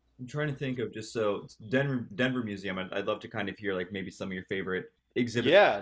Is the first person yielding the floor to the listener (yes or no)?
yes